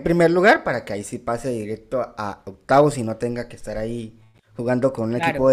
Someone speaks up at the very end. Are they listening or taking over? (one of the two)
listening